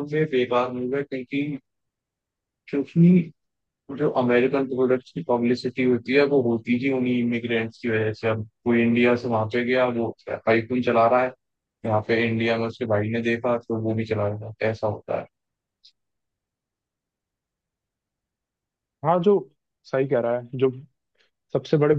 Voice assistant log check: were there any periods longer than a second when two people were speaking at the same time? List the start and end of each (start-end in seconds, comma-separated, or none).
none